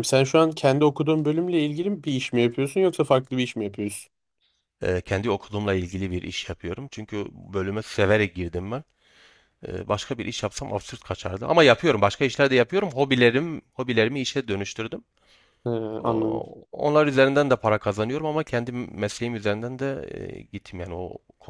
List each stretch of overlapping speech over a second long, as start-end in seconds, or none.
none